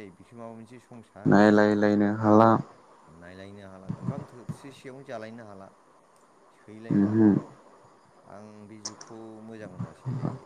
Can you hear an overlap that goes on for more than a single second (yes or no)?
no